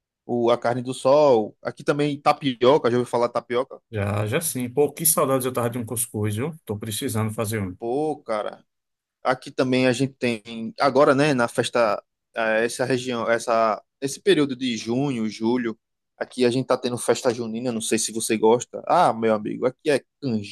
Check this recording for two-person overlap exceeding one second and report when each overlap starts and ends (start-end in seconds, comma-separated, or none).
none